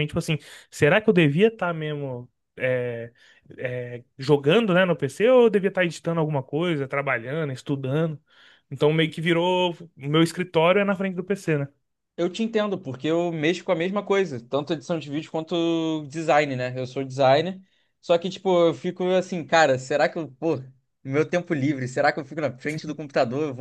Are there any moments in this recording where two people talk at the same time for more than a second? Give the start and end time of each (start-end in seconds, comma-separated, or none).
none